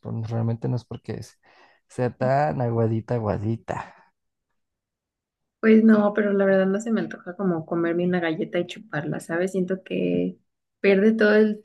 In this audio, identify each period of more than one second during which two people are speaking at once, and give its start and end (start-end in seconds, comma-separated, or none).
none